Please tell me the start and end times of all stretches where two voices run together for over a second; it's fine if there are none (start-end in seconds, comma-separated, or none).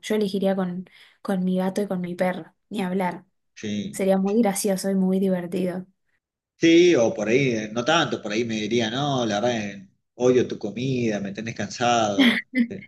none